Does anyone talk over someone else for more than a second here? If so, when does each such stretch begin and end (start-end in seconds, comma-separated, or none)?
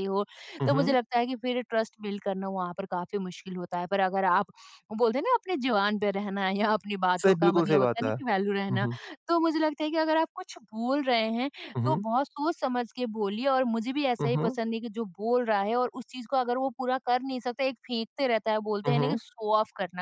7.2-8.9